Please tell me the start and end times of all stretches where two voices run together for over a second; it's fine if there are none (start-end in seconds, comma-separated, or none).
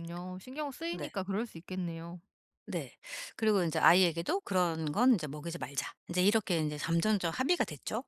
none